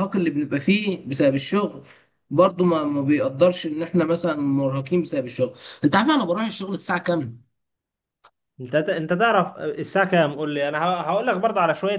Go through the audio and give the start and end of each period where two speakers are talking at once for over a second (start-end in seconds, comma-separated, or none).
none